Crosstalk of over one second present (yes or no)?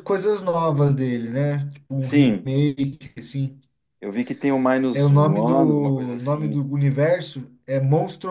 yes